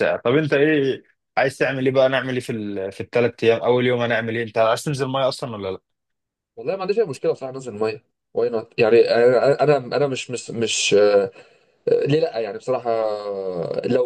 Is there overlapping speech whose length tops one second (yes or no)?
no